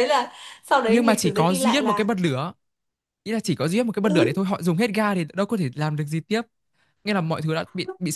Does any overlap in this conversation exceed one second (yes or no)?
yes